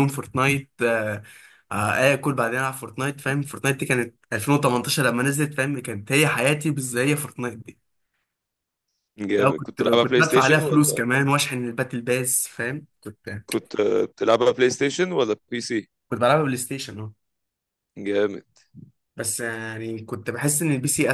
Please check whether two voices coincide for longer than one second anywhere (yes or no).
yes